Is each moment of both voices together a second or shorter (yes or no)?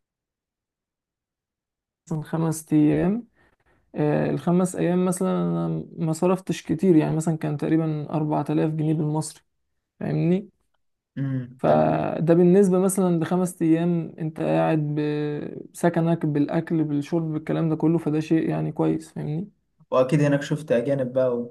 yes